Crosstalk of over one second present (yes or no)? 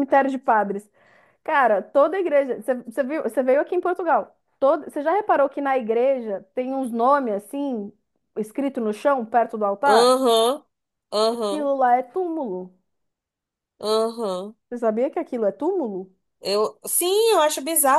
no